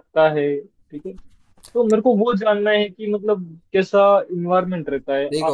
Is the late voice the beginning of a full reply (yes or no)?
no